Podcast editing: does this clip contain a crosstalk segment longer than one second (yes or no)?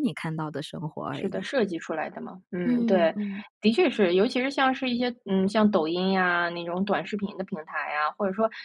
no